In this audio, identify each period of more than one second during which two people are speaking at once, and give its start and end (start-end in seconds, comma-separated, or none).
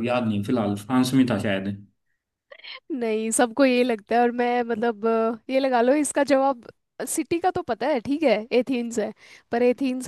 none